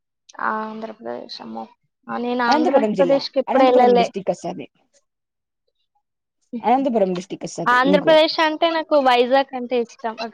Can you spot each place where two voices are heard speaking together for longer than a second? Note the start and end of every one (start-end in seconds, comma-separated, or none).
2.5-4.0